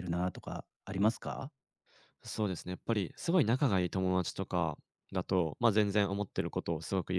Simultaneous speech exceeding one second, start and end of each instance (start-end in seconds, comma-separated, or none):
none